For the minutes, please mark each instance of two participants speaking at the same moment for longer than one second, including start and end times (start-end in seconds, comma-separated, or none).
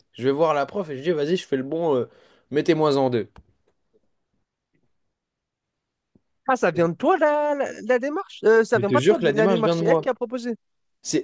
8.7-10.1